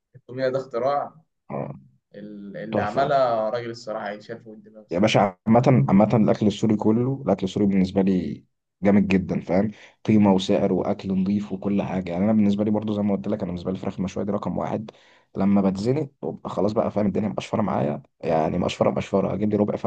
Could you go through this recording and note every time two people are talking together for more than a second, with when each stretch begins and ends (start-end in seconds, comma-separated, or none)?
none